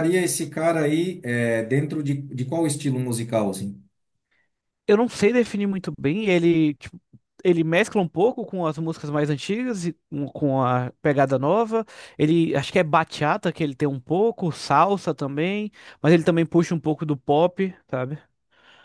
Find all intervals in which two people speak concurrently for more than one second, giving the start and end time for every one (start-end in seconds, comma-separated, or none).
none